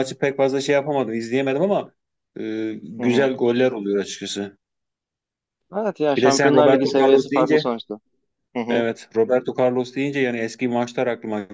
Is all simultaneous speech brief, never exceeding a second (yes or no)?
no